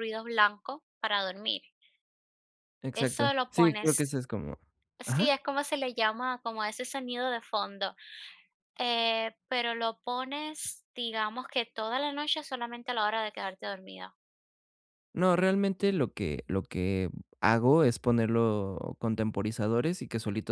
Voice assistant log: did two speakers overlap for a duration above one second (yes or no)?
yes